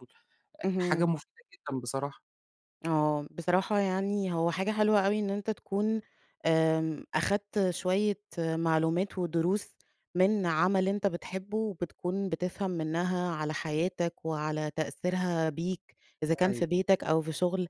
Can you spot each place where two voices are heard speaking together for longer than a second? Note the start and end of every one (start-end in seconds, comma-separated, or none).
none